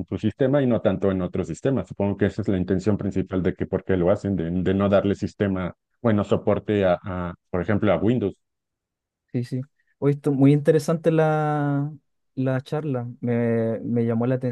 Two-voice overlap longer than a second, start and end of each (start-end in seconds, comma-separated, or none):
none